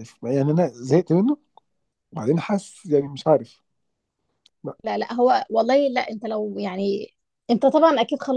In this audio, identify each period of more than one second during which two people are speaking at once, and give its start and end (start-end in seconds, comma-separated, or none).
none